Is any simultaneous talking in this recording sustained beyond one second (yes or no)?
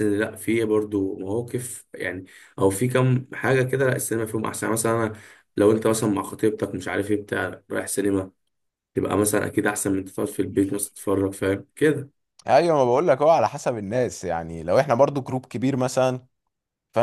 no